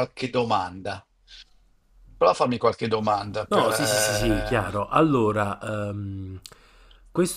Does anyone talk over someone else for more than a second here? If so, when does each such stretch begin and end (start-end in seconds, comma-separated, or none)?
3.5-4.7